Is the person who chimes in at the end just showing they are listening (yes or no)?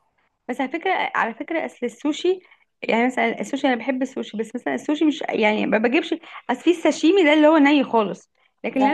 yes